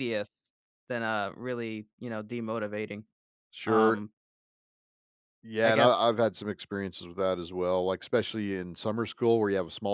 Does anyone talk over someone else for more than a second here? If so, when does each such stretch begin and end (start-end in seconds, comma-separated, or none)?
none